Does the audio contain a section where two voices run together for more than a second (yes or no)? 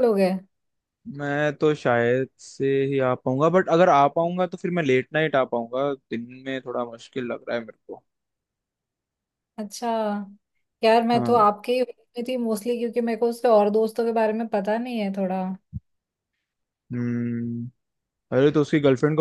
no